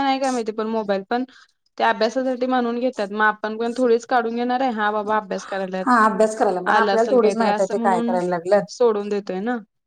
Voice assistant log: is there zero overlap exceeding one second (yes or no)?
no